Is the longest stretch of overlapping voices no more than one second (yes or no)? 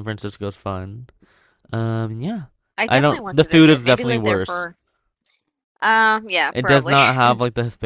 no